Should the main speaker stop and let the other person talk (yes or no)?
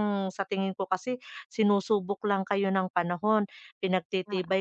no